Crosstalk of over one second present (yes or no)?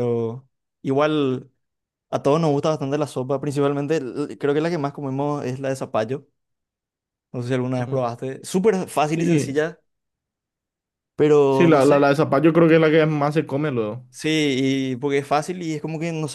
no